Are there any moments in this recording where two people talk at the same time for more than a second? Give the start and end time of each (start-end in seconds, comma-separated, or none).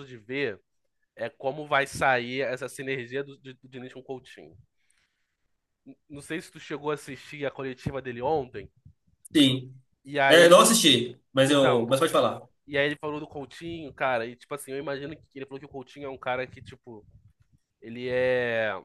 none